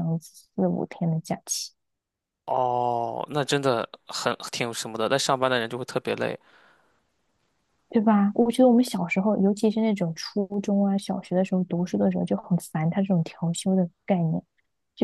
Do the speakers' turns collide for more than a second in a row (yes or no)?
no